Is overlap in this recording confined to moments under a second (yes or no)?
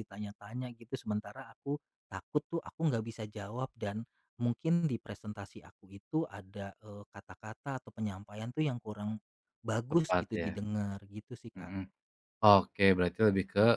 yes